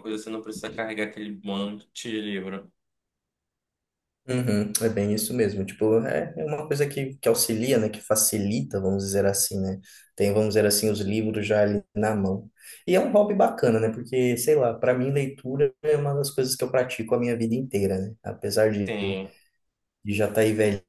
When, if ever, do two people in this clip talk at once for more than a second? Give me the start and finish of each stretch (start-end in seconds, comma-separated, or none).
none